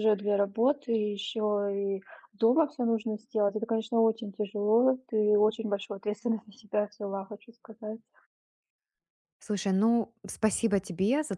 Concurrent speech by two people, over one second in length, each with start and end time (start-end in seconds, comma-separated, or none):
none